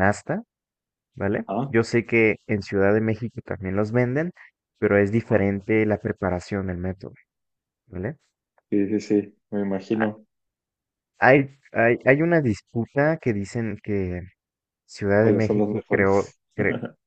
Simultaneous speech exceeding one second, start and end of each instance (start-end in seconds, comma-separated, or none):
15.1-16.4